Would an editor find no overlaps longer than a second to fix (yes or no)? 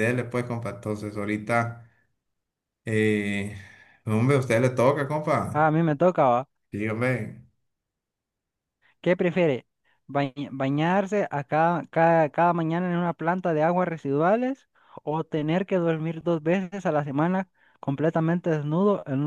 yes